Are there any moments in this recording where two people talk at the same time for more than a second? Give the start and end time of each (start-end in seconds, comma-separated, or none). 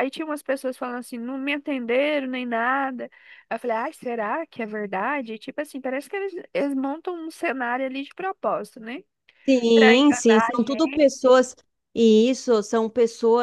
9.7-11.1